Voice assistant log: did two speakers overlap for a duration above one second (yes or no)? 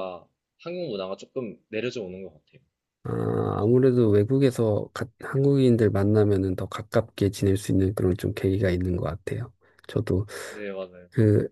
no